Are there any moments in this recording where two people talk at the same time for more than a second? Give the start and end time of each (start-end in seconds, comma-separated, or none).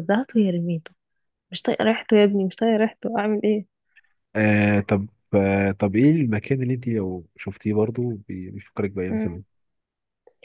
none